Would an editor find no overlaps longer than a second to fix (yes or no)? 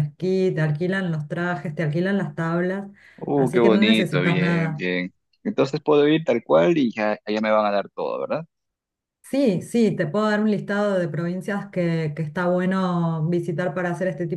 no